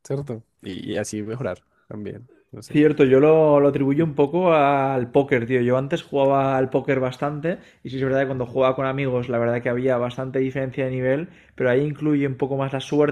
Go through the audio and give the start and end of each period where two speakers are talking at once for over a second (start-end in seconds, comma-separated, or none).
none